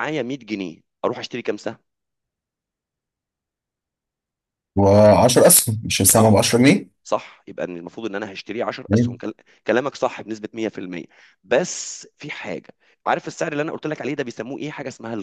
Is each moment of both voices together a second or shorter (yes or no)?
yes